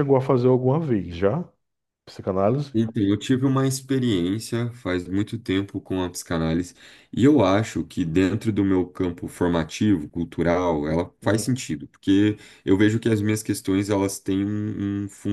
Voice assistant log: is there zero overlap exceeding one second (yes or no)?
yes